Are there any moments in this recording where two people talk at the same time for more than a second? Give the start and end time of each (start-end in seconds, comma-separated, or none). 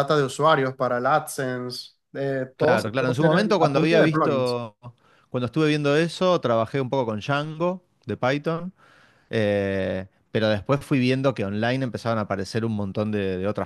2.6-4.6